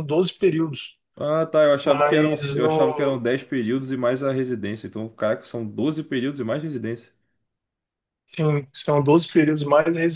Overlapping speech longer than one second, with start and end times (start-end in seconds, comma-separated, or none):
1.8-3.2